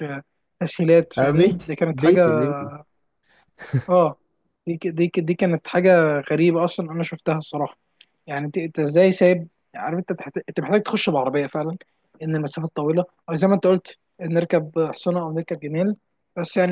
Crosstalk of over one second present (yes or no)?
yes